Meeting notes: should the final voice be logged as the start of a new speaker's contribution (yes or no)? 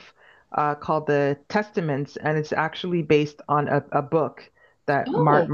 no